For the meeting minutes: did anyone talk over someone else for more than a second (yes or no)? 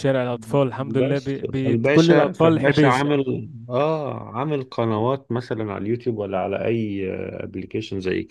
yes